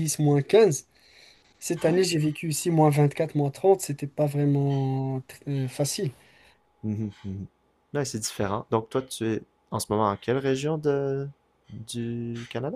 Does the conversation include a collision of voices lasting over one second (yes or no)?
no